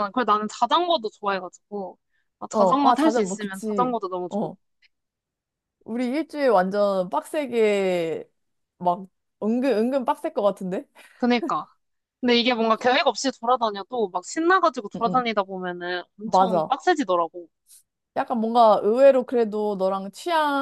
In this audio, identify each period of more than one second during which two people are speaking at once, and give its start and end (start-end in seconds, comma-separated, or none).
2.5-4.5